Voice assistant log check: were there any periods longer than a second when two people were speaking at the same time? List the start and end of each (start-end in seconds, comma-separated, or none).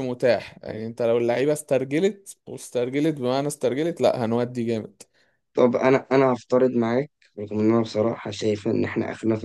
none